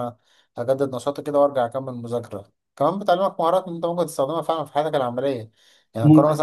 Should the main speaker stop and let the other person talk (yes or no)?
no